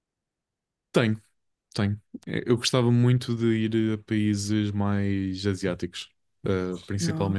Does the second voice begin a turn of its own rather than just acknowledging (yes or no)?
no